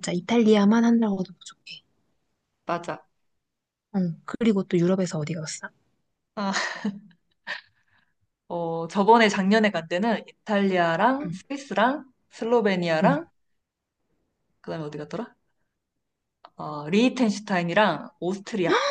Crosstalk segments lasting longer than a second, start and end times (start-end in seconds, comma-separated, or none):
none